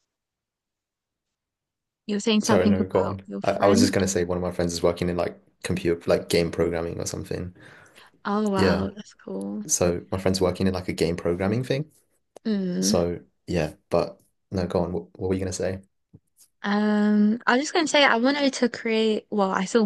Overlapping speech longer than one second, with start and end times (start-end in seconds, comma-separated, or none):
2.4-3.9